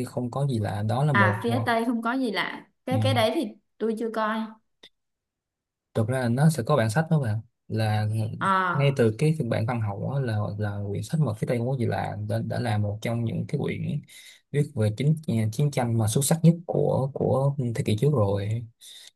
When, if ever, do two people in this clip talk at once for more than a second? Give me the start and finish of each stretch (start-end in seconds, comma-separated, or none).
none